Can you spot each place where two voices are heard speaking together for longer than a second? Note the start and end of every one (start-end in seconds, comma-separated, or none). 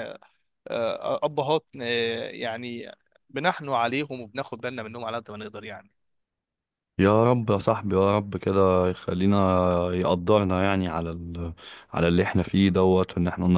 none